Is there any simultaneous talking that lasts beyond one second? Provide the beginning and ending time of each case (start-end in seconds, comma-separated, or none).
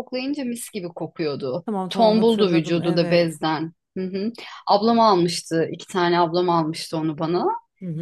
1.7-3.4